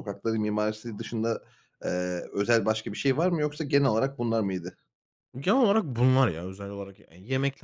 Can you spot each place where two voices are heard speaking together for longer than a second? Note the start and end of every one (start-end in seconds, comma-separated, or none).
none